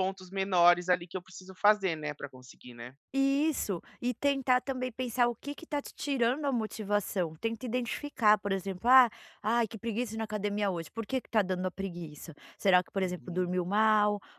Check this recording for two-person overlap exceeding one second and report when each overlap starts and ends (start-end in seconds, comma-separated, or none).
none